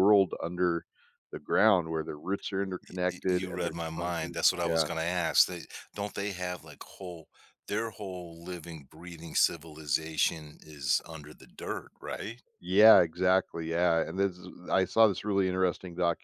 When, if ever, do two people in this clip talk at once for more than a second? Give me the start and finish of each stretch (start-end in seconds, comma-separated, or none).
2.9-4.9